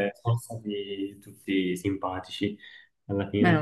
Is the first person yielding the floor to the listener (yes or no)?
no